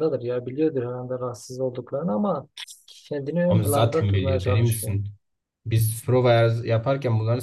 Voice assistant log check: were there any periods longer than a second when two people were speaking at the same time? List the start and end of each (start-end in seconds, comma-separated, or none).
3.5-5.0